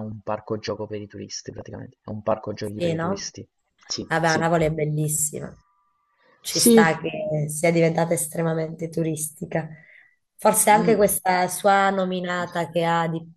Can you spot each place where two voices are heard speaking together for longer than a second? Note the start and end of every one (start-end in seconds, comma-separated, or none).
none